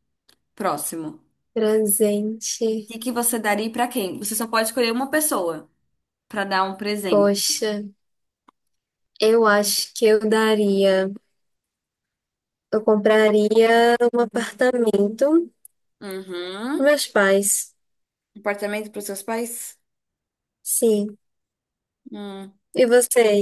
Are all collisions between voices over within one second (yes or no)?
yes